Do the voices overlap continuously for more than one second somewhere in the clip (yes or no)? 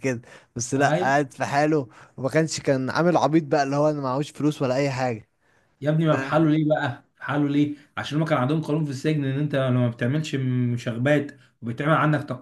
no